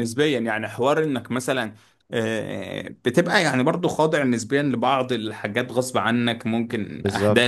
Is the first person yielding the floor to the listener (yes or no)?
no